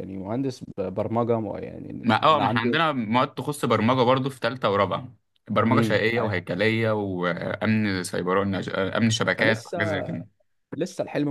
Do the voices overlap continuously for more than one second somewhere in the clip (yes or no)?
no